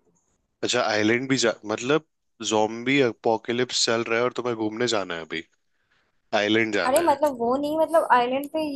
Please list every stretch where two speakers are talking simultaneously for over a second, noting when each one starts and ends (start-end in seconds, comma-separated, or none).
none